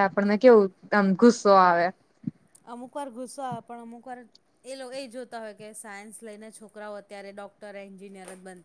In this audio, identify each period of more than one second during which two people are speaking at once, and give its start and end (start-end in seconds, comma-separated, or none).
none